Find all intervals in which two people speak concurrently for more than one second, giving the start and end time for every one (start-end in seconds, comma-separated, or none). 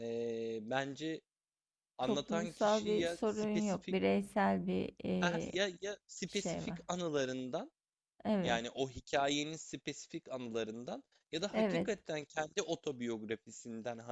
2.0-4.0